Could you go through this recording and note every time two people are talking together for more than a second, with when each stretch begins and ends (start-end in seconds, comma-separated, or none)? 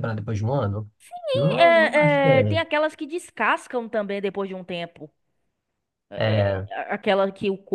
1.3-2.6